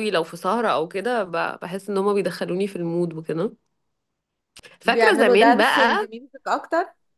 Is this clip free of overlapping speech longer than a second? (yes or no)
no